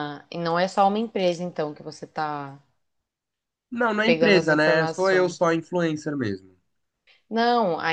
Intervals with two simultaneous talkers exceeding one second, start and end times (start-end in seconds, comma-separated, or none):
4.0-5.4